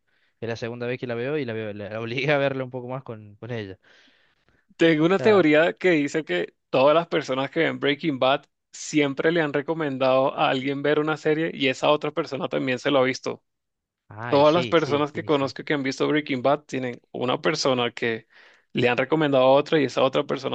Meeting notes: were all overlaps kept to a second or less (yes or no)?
no